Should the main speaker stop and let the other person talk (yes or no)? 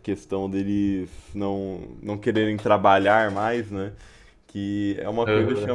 no